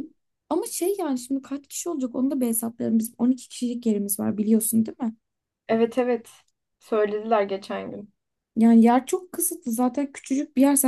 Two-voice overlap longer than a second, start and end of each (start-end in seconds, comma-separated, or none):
none